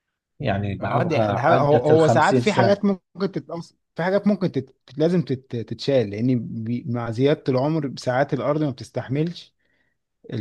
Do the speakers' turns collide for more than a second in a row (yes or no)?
yes